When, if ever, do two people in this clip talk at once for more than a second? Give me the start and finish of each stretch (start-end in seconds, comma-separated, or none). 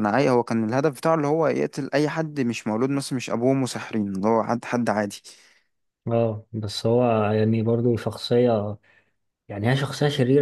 none